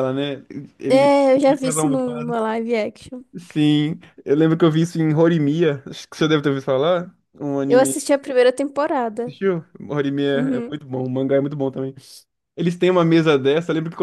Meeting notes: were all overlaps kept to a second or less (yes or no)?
no